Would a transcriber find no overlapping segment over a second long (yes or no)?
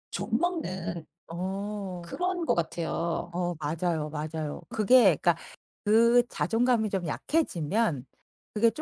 yes